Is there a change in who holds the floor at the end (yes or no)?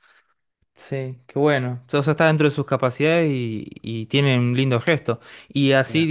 no